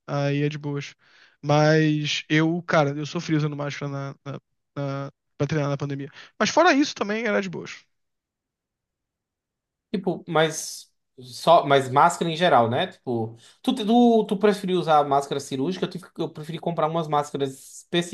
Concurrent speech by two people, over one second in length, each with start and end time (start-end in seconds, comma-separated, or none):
none